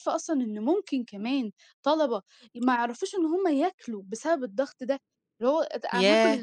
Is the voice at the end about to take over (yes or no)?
yes